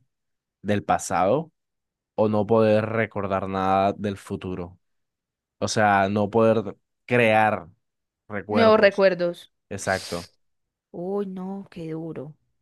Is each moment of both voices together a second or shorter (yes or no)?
yes